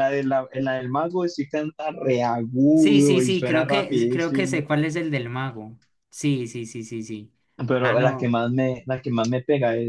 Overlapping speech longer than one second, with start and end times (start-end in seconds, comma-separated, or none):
2.7-4.6